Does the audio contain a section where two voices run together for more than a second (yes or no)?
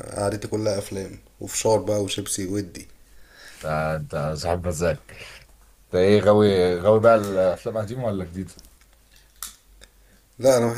no